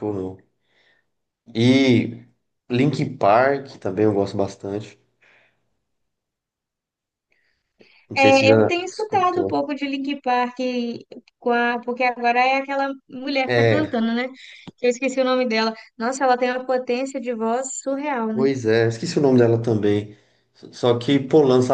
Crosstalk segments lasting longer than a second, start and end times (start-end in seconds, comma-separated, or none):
8.1-9.5